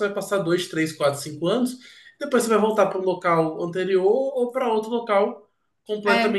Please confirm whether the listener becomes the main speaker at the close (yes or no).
no